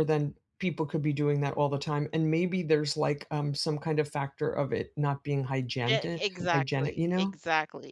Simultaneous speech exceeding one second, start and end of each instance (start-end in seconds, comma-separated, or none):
5.9-7.4